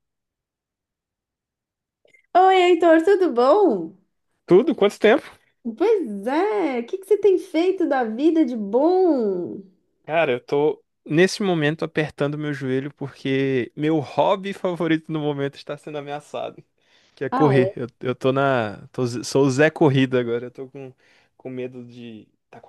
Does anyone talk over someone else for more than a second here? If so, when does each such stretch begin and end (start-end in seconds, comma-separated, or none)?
none